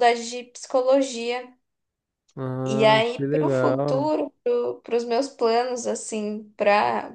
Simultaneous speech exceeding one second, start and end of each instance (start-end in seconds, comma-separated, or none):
2.7-4.1